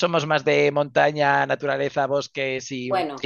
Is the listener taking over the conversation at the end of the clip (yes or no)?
yes